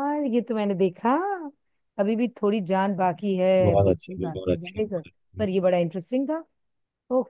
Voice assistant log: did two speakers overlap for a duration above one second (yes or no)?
yes